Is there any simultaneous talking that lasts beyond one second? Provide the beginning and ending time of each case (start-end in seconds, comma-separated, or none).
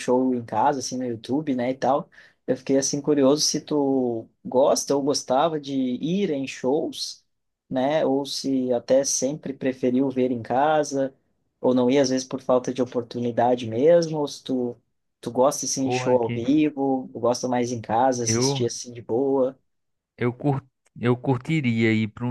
none